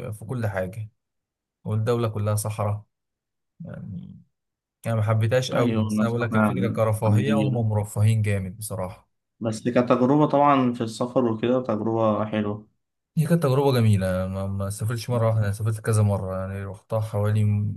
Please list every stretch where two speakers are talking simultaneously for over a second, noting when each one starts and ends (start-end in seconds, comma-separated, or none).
5.5-7.6